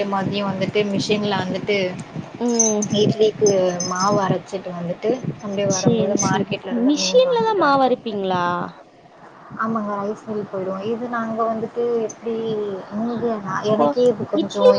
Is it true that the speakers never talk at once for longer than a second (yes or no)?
no